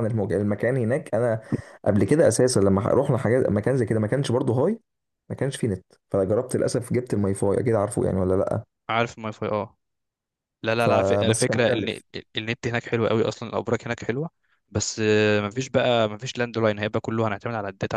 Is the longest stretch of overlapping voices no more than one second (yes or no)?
no